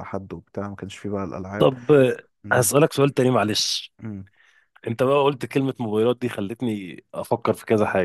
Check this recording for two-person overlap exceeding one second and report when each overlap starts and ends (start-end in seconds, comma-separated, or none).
none